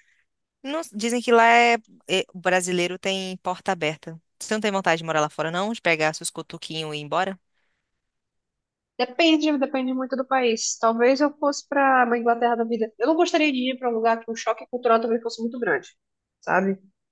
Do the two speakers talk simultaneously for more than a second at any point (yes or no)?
no